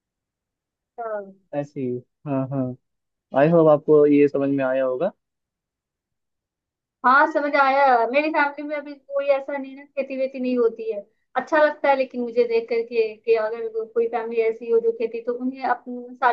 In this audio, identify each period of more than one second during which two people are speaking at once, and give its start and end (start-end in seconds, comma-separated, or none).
none